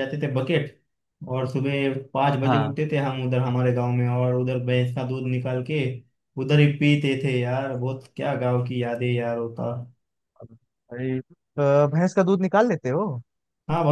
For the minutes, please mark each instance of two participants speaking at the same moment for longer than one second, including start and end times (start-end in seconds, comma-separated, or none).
none